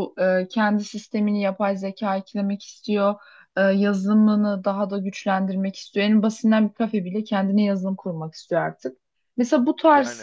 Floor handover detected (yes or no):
no